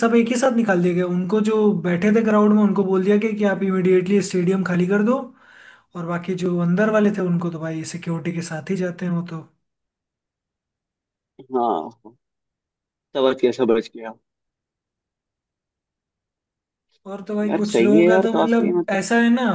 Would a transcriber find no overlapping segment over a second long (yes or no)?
no